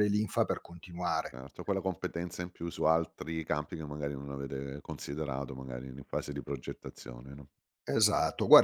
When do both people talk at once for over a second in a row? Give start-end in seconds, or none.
none